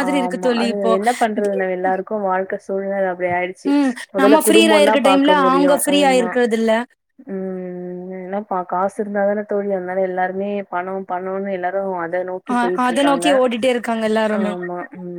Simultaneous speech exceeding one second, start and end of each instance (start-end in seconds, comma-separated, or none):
4.2-6.3